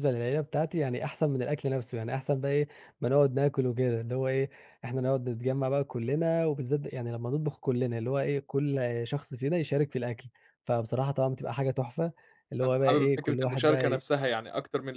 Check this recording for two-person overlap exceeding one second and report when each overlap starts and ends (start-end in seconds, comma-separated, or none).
12.6-14.0